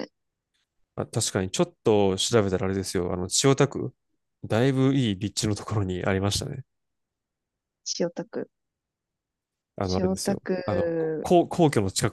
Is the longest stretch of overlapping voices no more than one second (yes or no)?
no